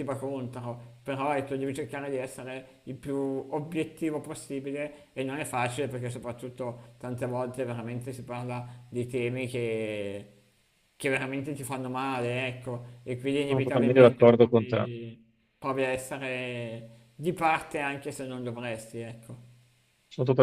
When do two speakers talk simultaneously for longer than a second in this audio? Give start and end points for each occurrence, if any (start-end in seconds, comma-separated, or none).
13.4-14.9